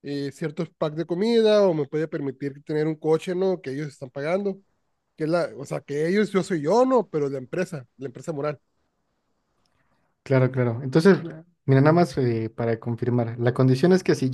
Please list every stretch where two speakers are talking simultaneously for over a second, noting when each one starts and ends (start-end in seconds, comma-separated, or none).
none